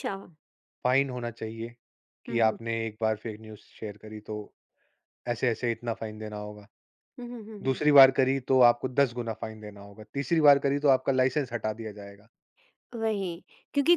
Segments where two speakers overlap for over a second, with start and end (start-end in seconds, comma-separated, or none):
none